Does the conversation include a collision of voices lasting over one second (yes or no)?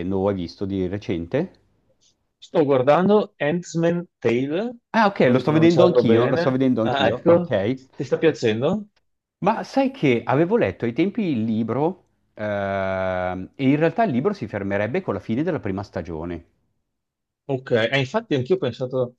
yes